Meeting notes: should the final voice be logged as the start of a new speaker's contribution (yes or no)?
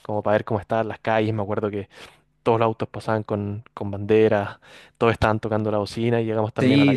no